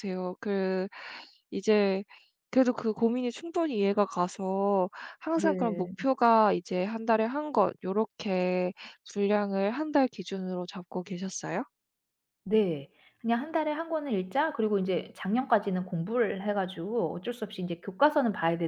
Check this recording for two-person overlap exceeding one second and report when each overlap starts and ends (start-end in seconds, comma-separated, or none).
none